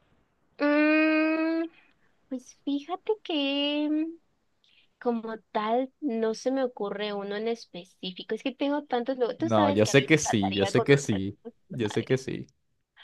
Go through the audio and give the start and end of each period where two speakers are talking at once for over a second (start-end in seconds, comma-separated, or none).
9.4-12.2